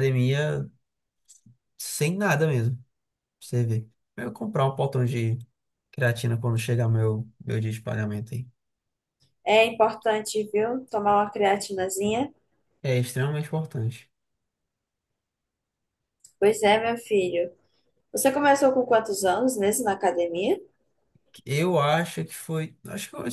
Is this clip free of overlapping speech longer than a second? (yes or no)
yes